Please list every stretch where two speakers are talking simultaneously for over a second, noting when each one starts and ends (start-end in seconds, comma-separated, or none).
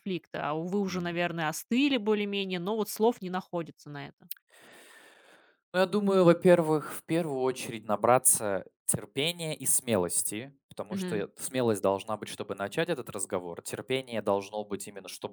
none